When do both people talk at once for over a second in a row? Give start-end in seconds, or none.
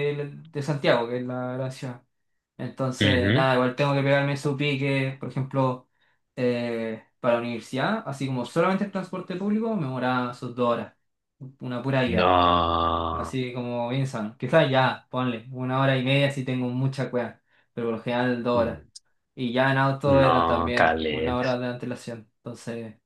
20.1-21.6